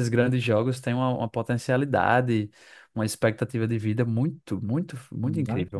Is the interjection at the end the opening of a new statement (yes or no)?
yes